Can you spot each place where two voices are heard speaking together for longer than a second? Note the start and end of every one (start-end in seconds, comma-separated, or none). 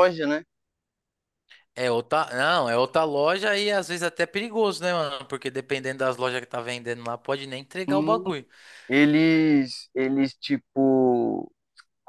none